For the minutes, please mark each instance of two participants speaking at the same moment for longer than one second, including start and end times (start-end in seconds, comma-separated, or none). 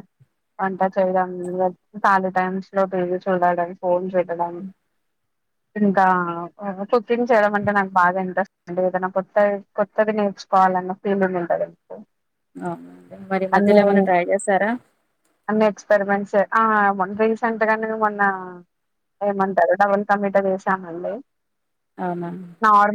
none